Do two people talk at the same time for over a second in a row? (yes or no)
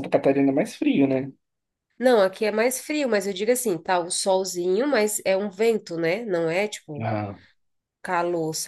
no